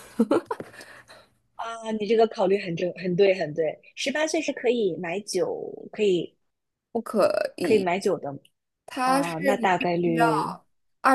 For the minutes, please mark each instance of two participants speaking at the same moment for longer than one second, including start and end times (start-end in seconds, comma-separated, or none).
9.0-10.2